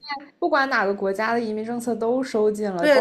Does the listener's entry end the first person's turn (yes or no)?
yes